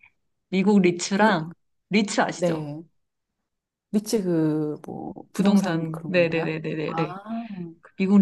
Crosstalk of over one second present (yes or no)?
yes